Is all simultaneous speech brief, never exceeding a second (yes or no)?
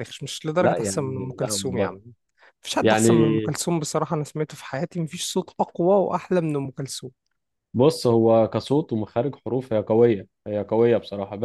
no